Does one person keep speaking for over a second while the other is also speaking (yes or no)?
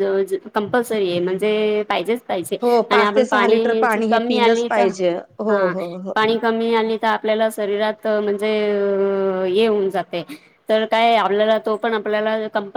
yes